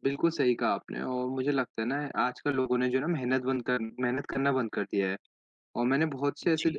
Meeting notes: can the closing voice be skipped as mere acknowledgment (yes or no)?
yes